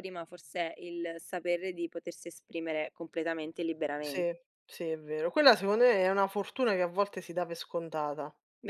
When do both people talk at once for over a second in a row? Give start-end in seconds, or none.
none